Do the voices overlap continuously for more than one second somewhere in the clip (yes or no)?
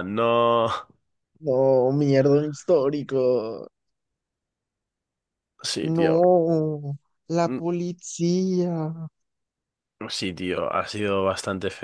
no